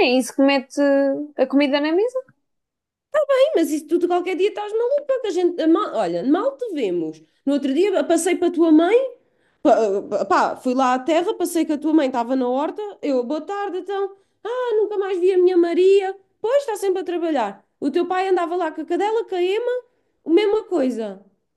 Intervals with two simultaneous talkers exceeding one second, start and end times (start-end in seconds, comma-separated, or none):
none